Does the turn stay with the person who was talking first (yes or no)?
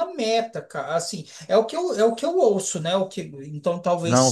no